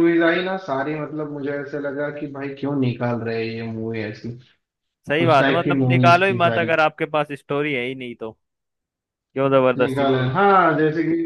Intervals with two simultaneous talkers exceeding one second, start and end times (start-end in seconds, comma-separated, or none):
5.3-6.7